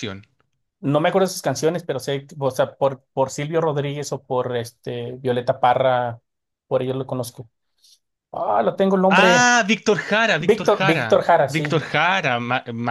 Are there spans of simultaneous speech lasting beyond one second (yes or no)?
yes